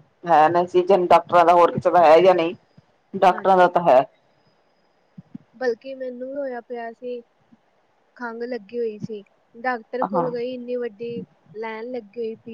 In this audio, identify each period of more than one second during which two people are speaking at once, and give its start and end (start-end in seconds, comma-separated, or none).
none